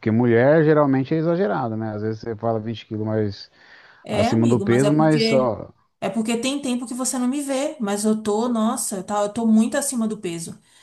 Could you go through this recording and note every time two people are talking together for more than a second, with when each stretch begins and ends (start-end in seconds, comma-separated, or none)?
4.1-5.5